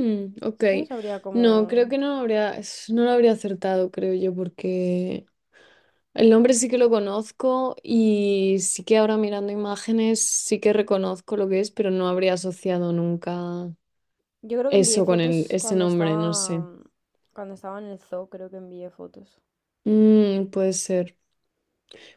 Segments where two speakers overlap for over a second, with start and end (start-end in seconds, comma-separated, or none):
14.7-16.6